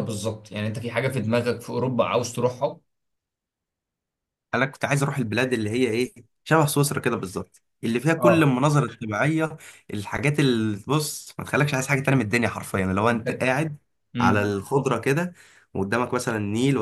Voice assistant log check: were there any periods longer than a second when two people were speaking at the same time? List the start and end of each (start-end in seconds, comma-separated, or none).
none